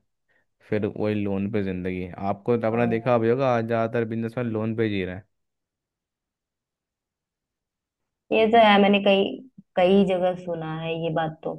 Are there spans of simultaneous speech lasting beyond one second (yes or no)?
no